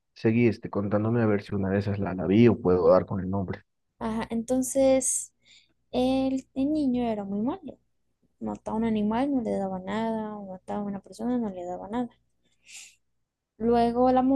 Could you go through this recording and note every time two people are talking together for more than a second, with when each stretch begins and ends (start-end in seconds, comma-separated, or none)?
none